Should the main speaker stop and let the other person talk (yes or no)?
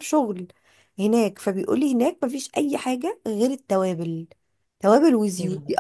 no